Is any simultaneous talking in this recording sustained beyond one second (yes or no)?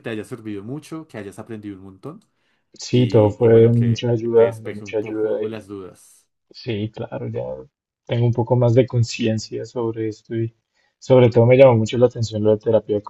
yes